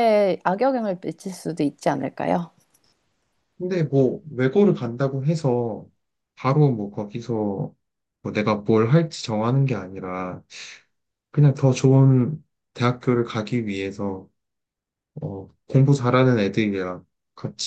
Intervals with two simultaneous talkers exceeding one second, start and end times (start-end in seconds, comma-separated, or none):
none